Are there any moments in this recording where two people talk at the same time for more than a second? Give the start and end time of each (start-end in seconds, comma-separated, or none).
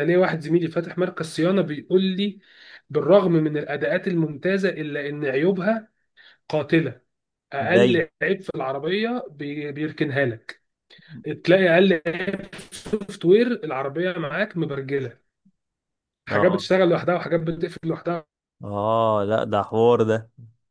none